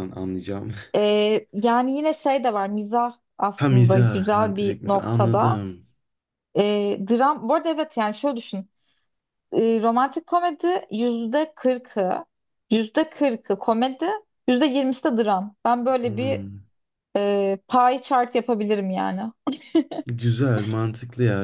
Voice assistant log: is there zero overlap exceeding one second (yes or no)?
no